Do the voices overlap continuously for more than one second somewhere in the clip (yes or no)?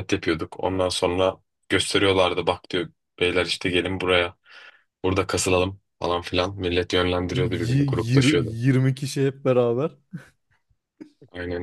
yes